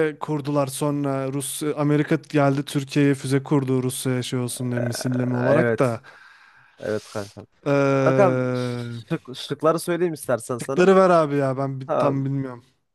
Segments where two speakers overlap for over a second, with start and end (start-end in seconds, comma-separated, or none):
none